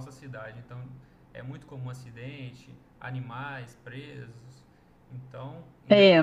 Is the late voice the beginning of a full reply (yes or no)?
no